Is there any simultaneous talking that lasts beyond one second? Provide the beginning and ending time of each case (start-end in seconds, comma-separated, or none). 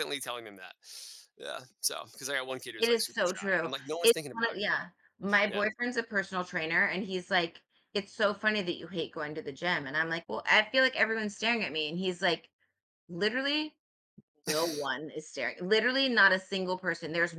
2.8-4.7